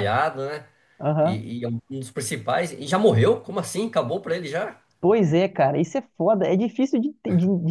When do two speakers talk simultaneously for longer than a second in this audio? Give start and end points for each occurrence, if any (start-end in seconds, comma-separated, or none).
none